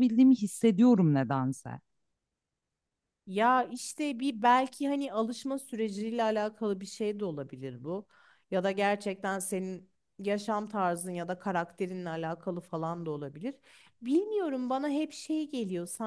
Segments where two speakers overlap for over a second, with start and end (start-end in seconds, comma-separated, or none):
none